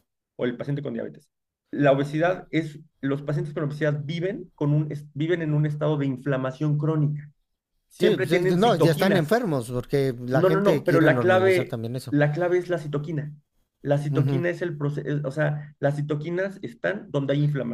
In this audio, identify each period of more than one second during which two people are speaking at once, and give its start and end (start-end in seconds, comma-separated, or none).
8.0-9.4, 10.3-12.2